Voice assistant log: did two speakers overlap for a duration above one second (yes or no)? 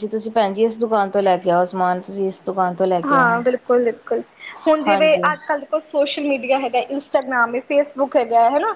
no